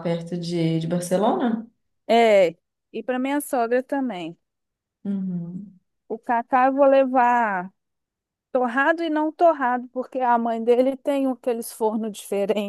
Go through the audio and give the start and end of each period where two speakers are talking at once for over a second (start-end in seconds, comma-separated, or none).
none